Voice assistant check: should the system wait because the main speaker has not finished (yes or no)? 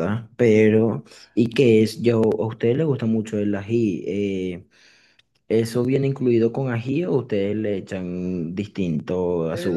no